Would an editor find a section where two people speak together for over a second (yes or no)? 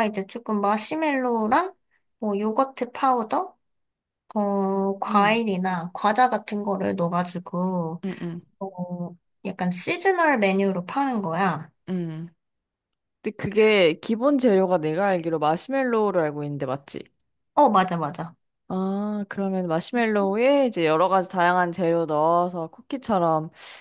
no